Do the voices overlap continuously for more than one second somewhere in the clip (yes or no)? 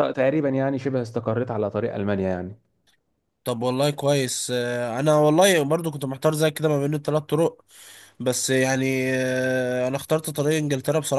no